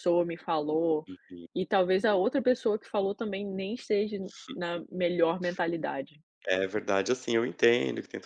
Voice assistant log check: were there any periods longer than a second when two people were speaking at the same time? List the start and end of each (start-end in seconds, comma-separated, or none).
none